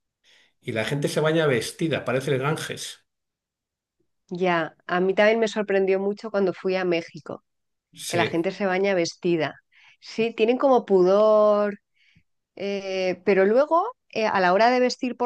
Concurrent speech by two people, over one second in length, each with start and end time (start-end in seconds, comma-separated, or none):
none